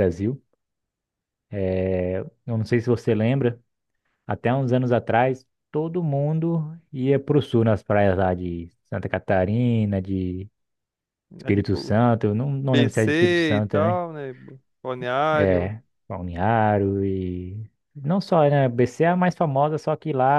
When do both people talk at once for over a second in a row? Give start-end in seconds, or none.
12.6-14.0